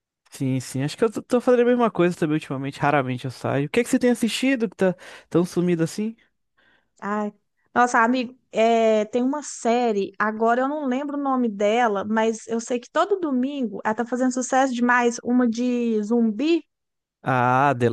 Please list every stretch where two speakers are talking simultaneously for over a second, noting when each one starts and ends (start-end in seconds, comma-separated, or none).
none